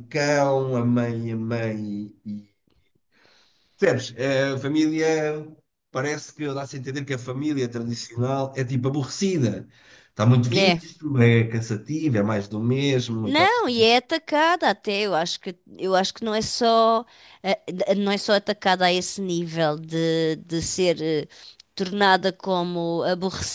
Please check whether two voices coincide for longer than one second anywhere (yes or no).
no